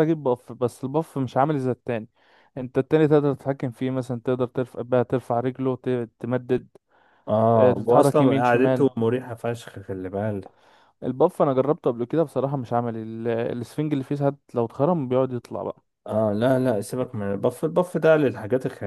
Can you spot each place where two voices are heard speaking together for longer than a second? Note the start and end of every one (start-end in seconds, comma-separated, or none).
7.5-8.9